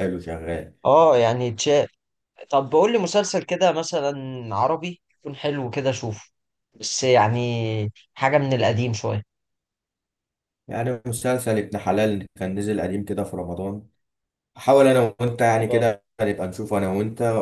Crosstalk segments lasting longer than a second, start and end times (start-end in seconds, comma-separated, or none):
none